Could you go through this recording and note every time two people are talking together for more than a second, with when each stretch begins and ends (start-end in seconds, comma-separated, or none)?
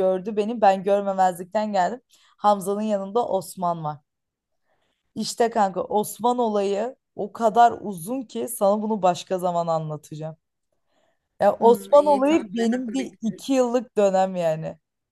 11.6-13.5